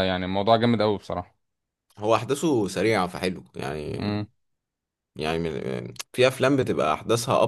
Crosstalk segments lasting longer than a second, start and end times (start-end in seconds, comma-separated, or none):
none